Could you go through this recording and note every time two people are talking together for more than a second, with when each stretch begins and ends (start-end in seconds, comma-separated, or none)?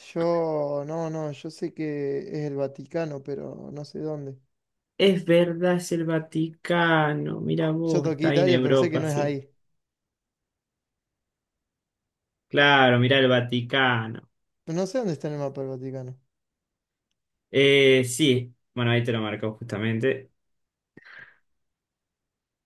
7.9-9.4